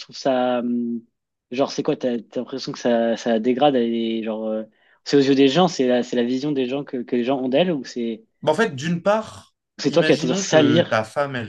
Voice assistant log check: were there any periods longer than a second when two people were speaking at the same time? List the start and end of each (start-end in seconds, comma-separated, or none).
9.8-11.0